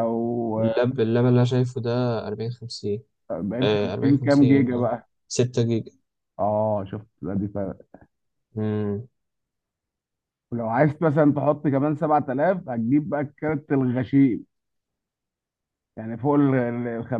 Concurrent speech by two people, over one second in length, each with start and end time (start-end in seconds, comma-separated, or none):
3.6-4.9